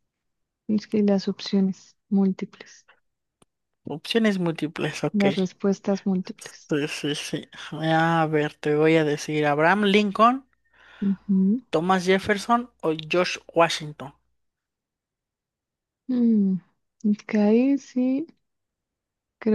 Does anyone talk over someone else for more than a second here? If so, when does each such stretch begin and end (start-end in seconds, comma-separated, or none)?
none